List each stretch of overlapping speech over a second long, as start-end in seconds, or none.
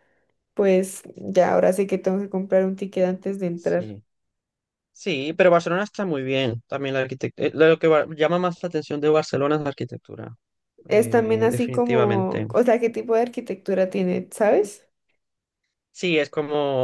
10.9-12.5